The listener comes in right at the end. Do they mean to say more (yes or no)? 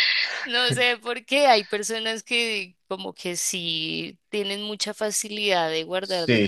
yes